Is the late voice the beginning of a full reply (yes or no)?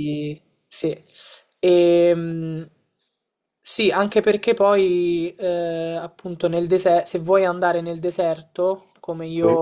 no